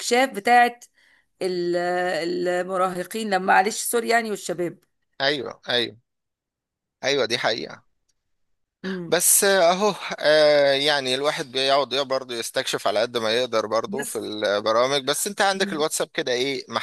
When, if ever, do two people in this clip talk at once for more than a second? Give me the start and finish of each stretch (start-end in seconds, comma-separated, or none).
none